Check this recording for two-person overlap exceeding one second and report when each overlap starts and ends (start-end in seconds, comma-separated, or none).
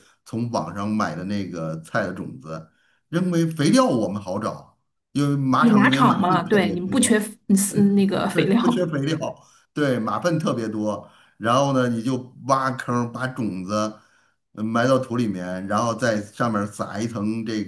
5.6-7.3